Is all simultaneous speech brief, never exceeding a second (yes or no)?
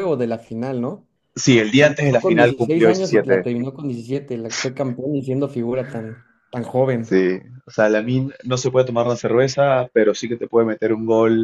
no